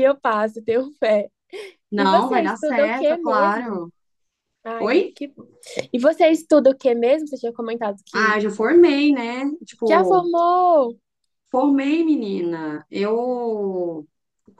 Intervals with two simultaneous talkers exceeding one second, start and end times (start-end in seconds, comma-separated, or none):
2.0-3.8